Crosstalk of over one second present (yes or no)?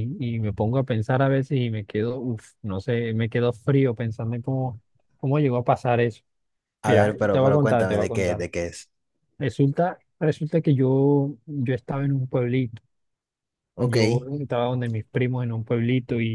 yes